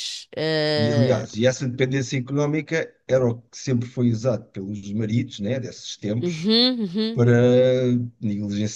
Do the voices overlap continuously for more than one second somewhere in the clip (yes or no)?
no